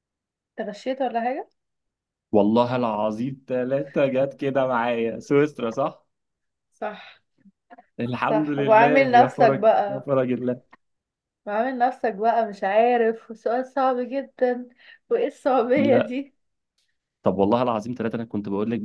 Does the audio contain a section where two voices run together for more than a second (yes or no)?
yes